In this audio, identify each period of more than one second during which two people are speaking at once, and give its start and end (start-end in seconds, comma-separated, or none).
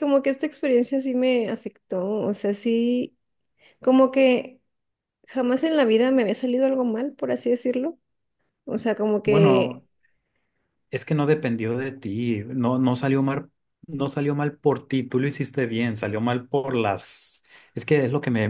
none